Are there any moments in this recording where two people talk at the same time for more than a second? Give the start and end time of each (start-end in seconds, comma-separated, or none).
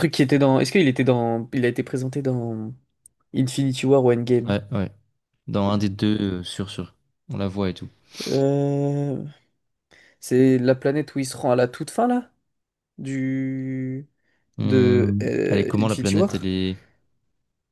14.6-16.5